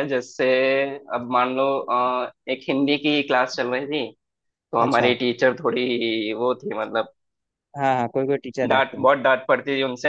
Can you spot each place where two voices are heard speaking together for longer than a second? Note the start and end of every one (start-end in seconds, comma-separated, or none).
none